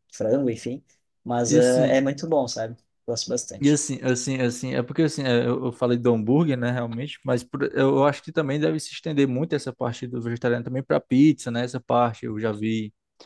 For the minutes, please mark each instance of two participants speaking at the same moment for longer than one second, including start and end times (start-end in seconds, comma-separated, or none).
none